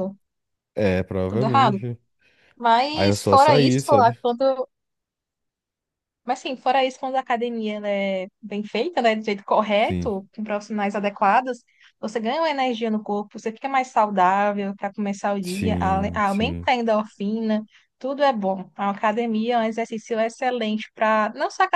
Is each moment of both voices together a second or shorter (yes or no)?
no